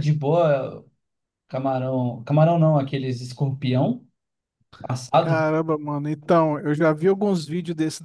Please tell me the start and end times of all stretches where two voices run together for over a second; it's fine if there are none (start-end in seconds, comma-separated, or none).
none